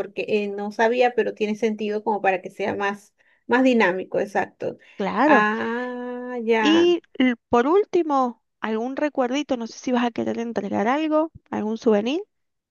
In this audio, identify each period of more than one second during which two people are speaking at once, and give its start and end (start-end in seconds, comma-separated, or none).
none